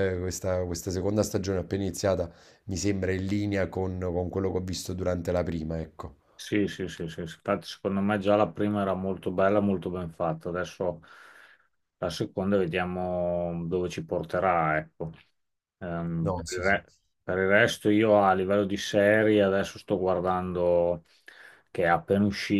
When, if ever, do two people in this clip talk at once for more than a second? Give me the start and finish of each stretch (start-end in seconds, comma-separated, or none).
none